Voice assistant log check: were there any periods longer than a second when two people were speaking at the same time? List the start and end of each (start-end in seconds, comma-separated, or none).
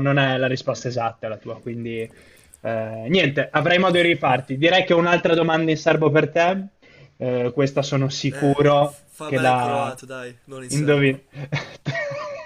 8.3-9.9